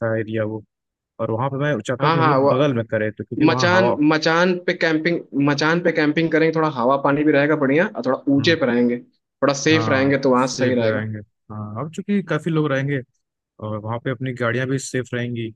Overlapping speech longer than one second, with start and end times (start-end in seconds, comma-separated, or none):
9.7-11.1